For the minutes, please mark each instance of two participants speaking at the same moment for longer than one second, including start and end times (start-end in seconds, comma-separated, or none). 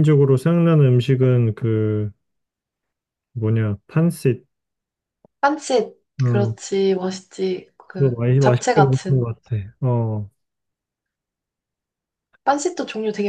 7.9-9.3